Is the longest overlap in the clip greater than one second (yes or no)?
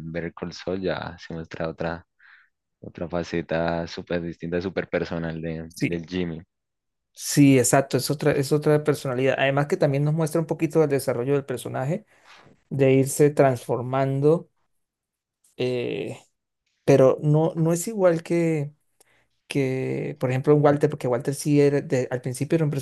no